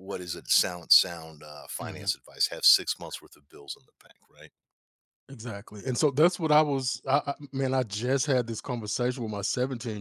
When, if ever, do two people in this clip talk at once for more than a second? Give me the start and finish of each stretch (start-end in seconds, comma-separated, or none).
none